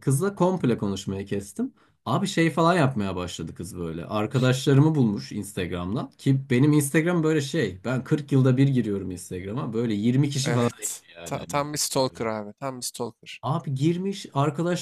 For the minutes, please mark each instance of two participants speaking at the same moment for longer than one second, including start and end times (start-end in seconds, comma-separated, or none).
10.4-12.2